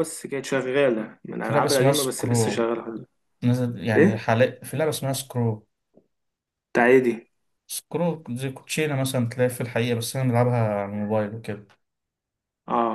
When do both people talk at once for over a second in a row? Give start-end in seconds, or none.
1.4-2.7